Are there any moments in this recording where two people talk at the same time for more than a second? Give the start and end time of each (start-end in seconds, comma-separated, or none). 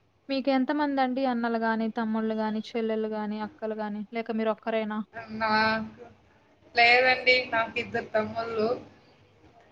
none